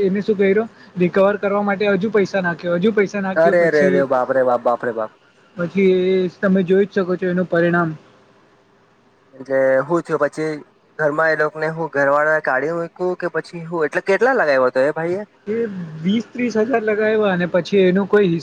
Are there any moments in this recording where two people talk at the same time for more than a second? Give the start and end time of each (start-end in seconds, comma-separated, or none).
none